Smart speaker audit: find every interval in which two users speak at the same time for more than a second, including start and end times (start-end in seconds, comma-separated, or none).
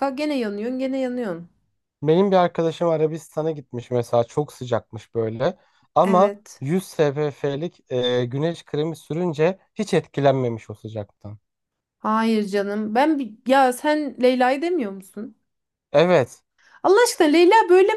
none